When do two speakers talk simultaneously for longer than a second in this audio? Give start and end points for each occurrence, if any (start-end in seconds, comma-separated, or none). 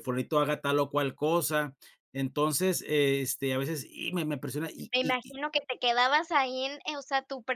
none